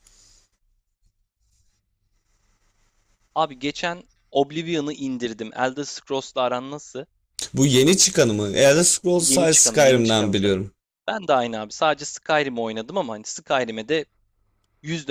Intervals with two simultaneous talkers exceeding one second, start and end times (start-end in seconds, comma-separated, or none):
9.2-10.6